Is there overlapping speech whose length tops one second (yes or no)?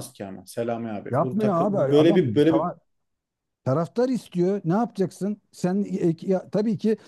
yes